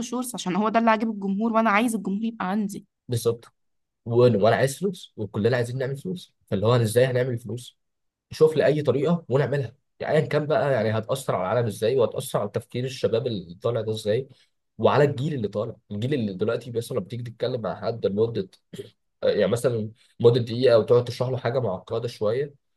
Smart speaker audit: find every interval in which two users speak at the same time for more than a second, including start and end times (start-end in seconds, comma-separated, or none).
none